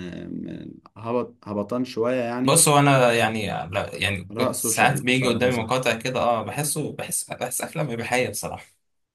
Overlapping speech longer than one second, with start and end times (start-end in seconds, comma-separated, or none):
4.3-5.7